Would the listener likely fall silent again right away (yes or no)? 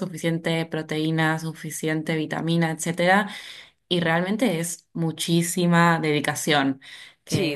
yes